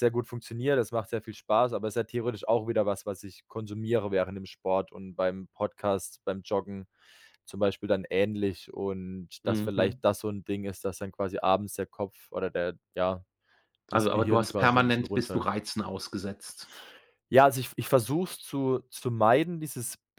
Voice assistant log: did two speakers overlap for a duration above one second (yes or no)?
yes